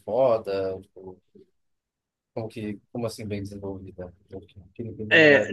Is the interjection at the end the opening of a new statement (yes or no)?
yes